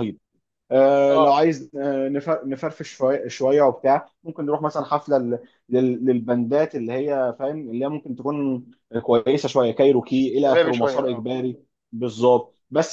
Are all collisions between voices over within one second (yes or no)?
no